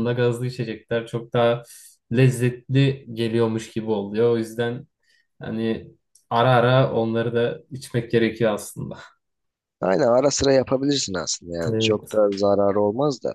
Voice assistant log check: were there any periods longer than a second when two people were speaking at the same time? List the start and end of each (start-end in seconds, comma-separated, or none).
none